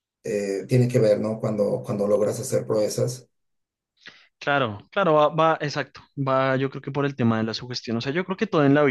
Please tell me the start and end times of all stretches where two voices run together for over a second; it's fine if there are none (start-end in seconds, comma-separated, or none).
none